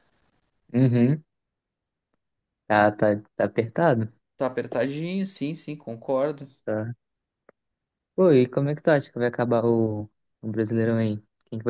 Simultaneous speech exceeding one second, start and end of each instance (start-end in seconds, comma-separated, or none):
none